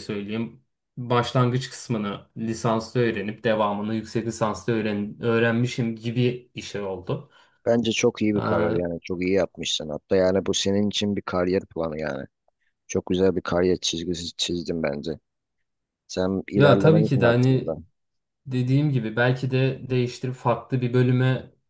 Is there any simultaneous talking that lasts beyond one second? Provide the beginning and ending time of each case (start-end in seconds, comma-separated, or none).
16.6-17.8